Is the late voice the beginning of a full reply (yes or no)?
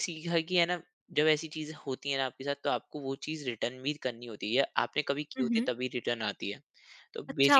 yes